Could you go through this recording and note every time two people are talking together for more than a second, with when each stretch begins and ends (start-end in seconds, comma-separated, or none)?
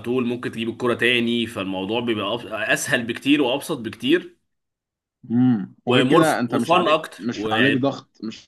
5.9-8.0